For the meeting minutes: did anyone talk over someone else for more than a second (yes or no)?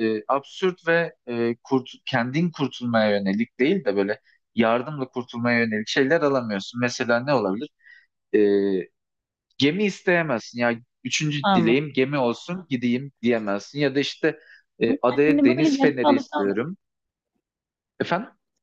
yes